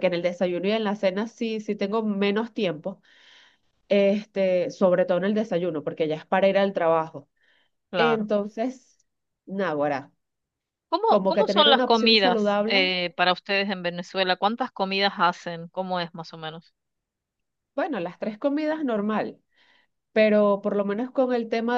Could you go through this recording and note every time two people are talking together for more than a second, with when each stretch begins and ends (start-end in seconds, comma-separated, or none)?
11.1-12.9